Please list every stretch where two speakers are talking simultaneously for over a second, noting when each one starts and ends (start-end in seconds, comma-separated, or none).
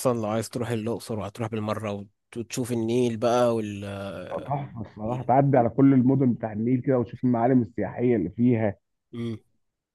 none